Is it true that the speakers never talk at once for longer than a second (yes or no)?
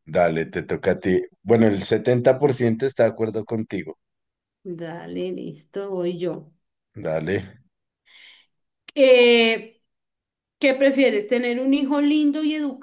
yes